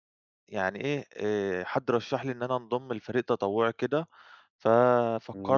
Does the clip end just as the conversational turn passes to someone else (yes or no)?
no